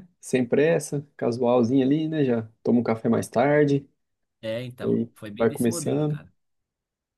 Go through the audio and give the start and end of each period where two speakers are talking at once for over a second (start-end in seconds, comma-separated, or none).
4.8-6.2